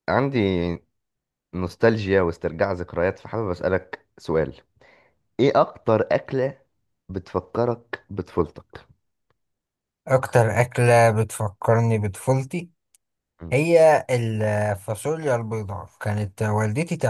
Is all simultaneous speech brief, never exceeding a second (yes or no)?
yes